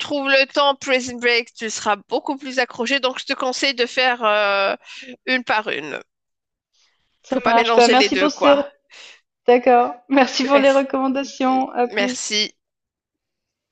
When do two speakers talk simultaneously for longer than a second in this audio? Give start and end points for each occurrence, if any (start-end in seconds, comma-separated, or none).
7.3-8.6